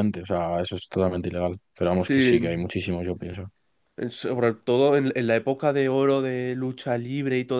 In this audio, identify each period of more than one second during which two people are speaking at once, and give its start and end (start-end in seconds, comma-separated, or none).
none